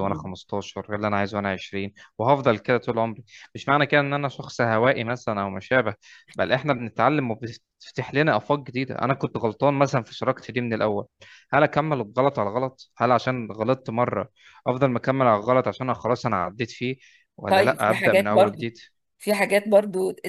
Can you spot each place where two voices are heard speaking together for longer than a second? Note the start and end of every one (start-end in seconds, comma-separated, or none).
17.5-18.7